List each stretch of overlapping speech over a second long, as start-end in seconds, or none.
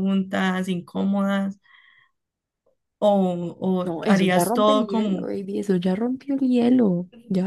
3.9-5.3